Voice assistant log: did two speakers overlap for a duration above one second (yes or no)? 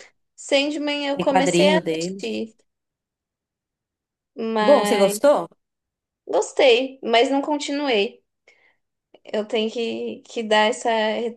yes